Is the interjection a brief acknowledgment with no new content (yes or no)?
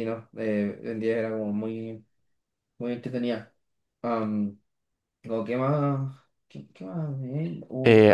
no